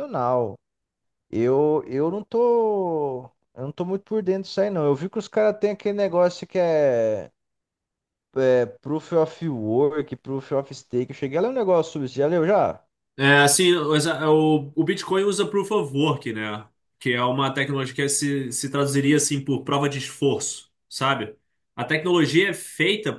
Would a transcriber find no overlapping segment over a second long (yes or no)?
yes